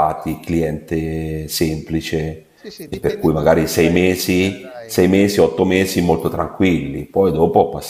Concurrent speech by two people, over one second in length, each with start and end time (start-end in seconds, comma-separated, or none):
2.9-5.3